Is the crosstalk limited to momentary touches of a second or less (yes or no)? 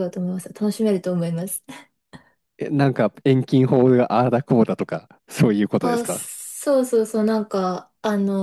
yes